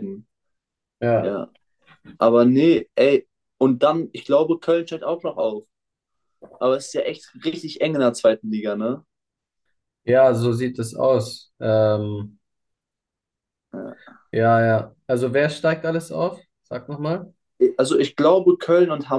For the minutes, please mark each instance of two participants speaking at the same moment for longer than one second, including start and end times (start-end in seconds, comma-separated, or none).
none